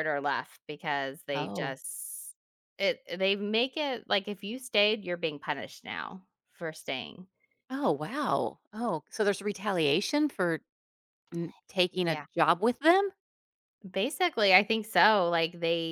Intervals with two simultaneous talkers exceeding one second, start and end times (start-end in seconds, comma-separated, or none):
none